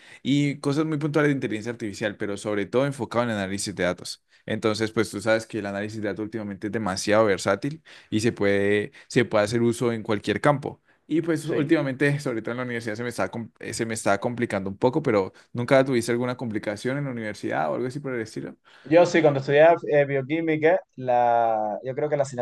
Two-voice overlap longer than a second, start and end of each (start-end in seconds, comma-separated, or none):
none